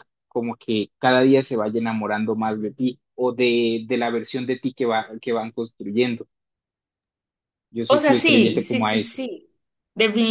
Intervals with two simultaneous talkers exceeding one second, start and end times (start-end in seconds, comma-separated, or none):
7.9-9.2